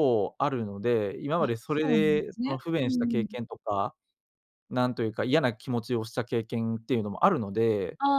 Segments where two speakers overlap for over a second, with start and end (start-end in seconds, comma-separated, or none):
1.4-3.4